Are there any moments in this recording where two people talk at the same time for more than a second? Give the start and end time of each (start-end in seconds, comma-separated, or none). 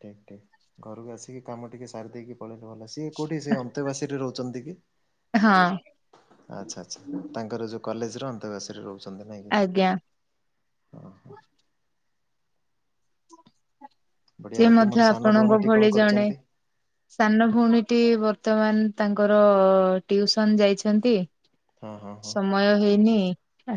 14.6-16.3